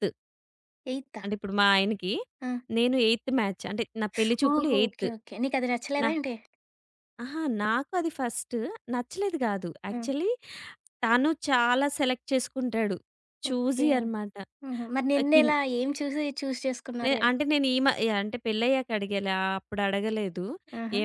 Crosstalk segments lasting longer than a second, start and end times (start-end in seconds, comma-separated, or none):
none